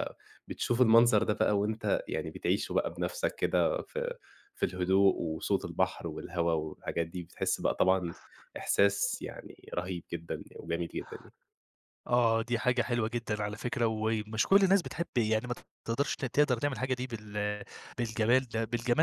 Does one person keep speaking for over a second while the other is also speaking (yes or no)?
no